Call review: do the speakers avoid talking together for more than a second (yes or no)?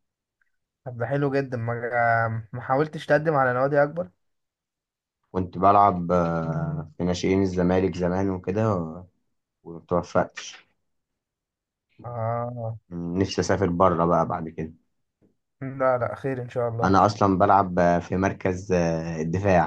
yes